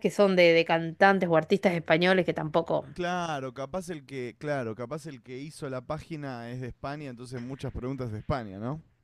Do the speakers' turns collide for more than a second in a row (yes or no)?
no